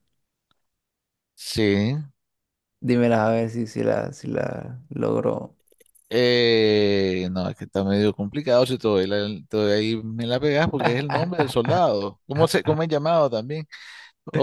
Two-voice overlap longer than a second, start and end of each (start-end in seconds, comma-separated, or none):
none